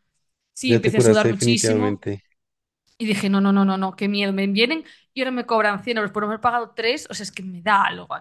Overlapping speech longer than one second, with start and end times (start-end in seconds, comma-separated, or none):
0.7-2.1